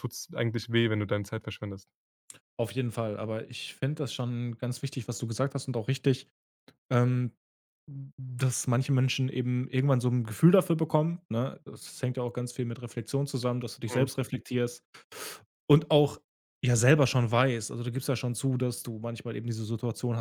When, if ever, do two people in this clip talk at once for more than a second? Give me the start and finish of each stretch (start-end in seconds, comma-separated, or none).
none